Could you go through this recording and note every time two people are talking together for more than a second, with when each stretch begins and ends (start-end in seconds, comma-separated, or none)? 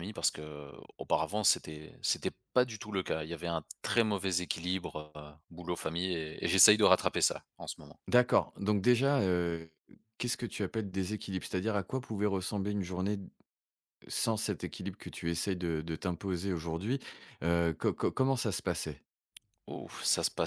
none